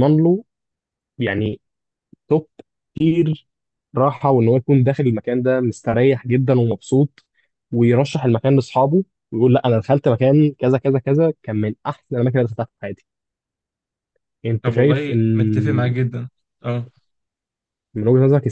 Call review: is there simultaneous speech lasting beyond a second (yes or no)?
yes